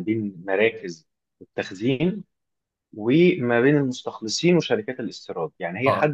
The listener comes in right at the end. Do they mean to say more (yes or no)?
no